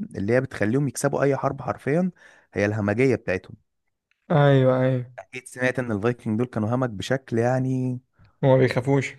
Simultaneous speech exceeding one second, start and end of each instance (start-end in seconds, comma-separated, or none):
none